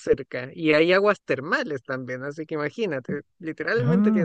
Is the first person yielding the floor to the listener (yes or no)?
yes